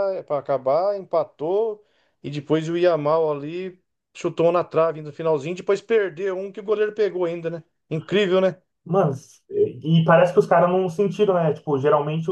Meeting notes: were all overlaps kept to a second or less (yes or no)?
yes